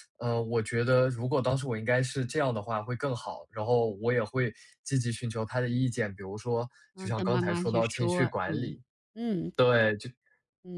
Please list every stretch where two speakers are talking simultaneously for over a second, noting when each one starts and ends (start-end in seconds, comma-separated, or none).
7.0-8.8